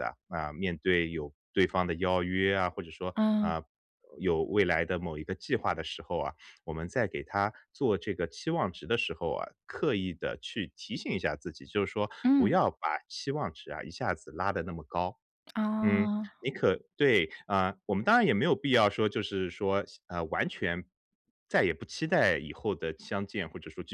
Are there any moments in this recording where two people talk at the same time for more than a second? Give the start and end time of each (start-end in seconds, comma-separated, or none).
none